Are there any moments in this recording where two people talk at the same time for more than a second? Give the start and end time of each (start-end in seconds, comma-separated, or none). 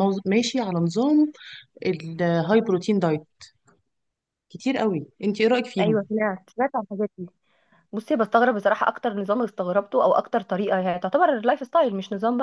none